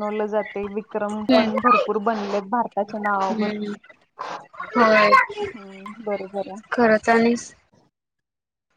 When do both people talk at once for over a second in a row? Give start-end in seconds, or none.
none